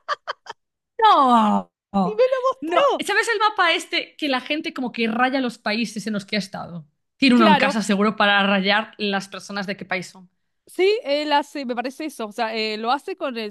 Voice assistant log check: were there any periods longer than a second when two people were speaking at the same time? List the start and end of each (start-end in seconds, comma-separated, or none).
none